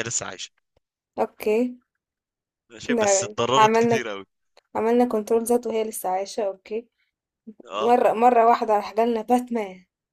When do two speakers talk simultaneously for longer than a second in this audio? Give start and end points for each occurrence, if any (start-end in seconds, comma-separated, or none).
2.8-4.1